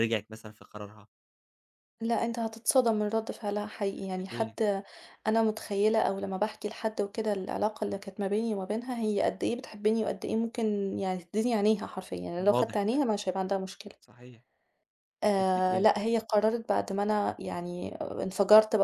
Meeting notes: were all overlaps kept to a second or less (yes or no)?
yes